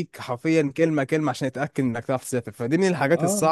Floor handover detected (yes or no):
no